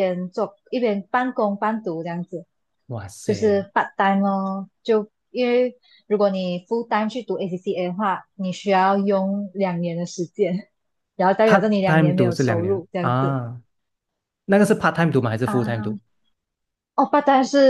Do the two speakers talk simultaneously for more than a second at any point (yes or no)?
yes